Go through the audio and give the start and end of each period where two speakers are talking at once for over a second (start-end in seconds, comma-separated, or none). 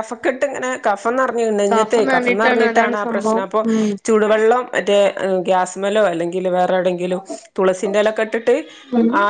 1.7-3.6